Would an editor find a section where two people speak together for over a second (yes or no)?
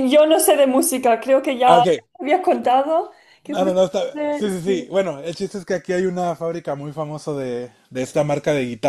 yes